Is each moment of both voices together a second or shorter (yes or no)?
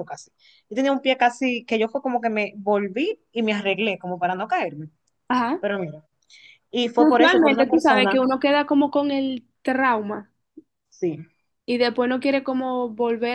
no